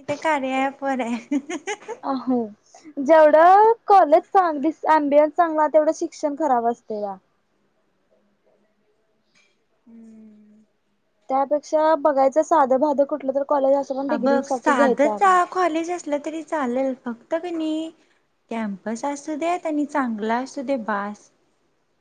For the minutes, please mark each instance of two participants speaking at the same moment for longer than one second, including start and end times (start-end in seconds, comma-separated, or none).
14.1-15.3